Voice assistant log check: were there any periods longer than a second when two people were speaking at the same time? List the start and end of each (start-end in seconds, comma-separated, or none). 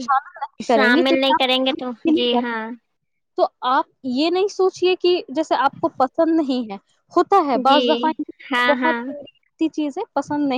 0.7-2.4